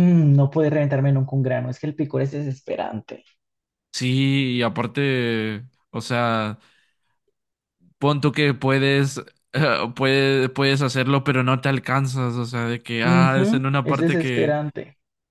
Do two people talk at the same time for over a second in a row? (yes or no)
yes